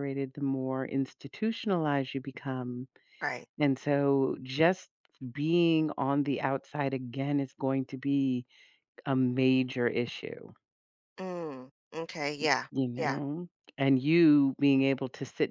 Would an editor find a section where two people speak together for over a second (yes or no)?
no